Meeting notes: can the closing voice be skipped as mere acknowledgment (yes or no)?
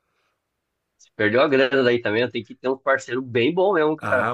no